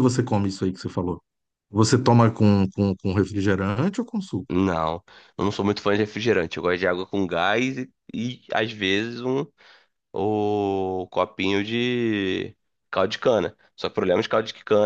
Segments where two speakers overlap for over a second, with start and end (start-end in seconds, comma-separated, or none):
none